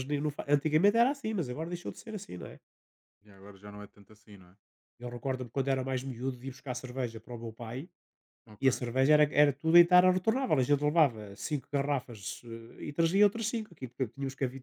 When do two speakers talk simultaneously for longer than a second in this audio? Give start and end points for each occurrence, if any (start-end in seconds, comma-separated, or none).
none